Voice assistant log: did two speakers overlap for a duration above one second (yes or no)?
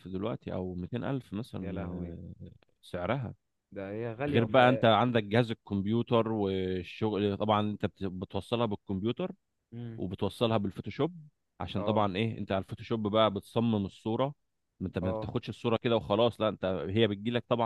no